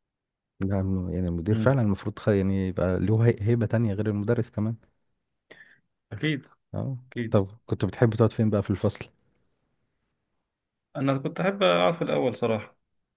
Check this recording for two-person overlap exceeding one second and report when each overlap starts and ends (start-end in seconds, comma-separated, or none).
none